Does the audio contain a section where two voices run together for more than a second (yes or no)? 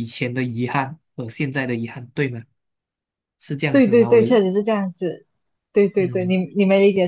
no